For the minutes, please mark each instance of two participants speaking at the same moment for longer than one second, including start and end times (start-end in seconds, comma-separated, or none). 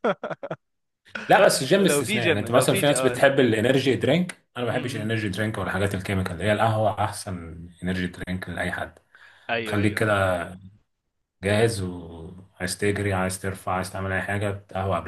1.8-3.4